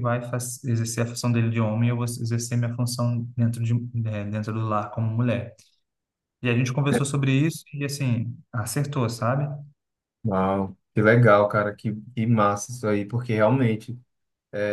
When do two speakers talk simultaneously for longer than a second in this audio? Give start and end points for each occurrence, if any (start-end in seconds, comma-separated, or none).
none